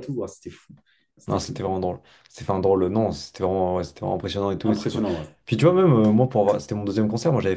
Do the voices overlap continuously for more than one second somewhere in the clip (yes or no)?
no